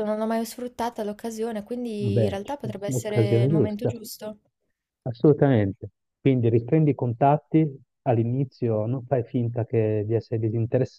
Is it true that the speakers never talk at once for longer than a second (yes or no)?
no